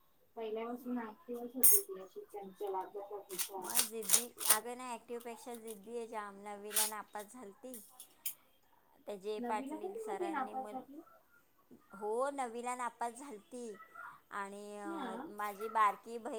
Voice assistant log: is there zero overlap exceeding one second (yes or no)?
no